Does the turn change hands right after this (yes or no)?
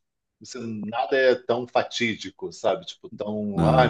no